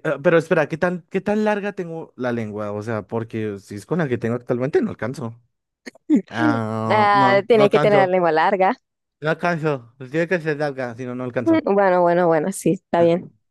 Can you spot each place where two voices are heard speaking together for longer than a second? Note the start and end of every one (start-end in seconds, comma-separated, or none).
6.9-8.2